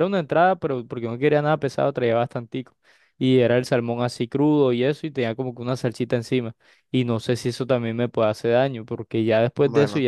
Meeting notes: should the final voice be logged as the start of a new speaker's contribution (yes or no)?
no